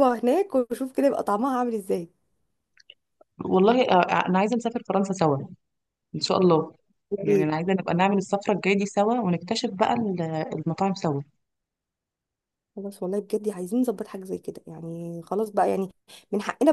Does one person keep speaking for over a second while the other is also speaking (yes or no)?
no